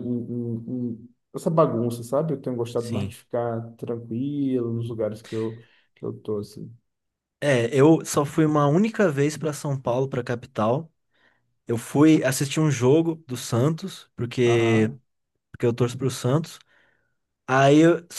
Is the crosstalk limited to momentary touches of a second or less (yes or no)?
yes